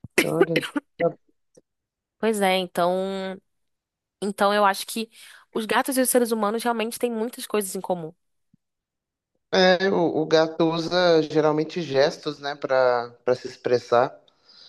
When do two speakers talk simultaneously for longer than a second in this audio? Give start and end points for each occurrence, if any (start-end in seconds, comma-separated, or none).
none